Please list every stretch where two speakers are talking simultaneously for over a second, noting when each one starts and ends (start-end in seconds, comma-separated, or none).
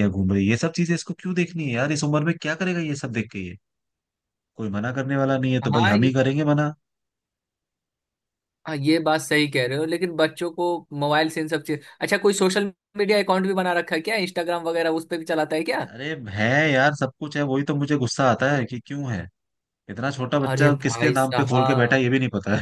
20.5-22.0